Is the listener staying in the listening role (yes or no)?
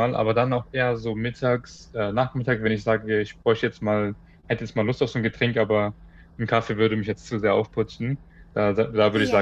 yes